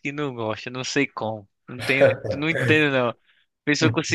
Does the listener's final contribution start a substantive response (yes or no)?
no